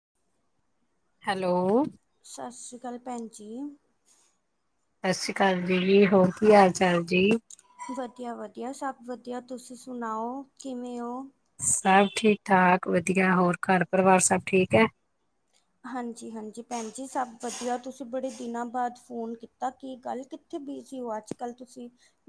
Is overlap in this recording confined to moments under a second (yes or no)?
yes